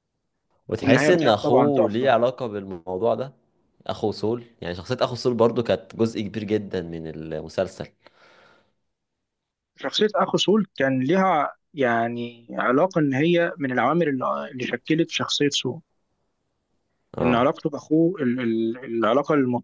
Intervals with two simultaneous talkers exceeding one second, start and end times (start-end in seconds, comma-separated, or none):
0.8-2.1